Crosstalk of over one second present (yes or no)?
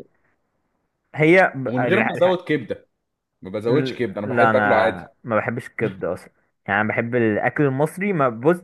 yes